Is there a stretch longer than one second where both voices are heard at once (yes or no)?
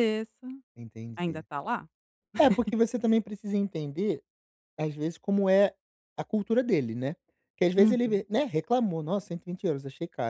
no